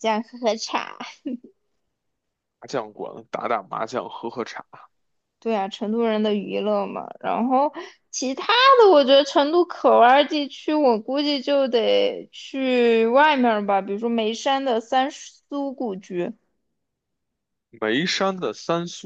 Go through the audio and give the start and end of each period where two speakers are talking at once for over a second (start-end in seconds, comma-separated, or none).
none